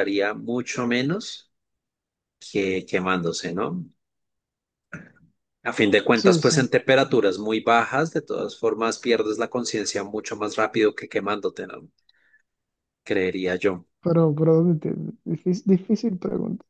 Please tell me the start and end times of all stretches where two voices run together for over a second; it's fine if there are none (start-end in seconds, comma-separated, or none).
none